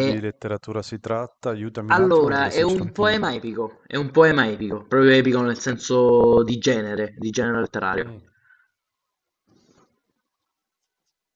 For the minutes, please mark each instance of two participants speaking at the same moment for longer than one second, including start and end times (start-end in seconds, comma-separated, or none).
1.9-3.2